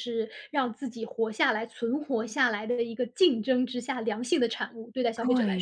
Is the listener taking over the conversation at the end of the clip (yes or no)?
yes